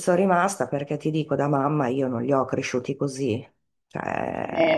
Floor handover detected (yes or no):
yes